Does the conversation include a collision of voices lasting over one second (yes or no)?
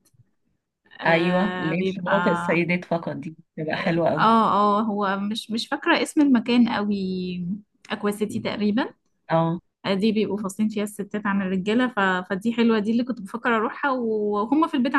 yes